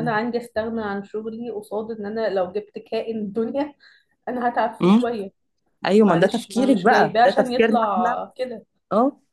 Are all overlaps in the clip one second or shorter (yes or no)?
no